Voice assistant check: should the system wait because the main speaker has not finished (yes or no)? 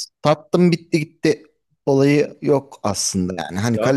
no